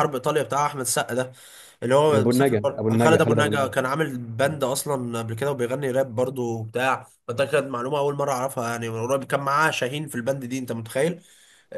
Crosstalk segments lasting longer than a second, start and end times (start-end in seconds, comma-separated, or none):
2.1-3.8